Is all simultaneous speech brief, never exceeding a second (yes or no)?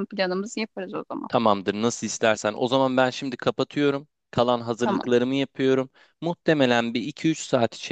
yes